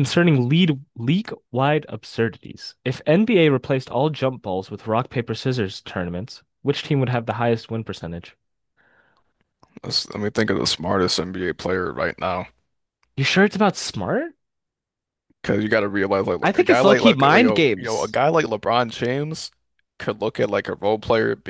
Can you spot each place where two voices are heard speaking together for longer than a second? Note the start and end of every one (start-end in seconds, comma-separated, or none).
16.4-18.2